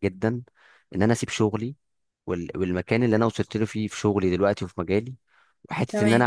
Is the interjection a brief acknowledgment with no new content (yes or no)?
yes